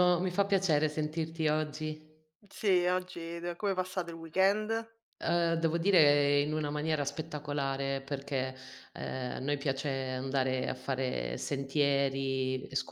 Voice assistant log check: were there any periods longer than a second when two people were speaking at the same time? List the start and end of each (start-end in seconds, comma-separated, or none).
none